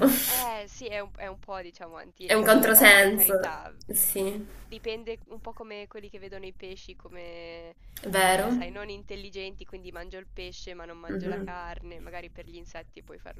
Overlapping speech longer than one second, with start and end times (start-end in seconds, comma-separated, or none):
2.2-3.7